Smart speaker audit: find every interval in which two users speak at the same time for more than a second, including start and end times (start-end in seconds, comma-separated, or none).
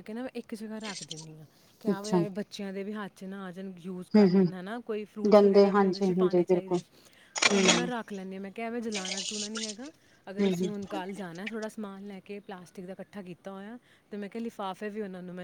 5.3-6.8